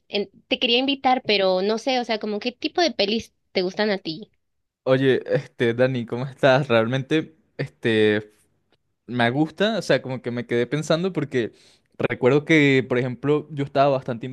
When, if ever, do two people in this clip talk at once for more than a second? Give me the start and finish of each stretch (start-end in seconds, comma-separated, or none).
none